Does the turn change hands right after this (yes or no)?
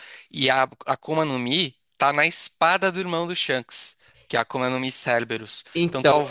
no